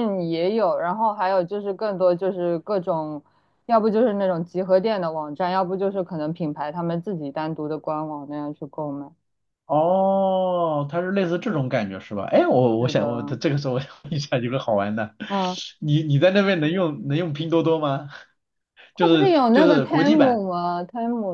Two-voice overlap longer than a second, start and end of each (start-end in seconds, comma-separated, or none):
18.9-20.4